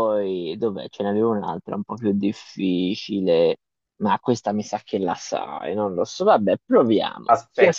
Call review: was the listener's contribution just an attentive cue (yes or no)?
yes